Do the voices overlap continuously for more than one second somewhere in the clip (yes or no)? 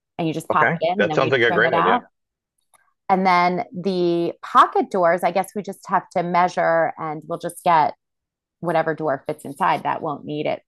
yes